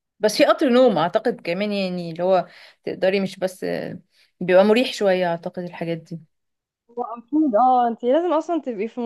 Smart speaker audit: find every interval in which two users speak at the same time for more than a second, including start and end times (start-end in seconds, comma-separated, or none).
none